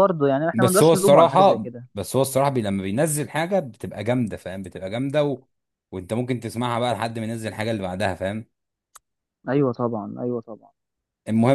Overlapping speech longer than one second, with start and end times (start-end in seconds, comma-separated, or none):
0.5-1.9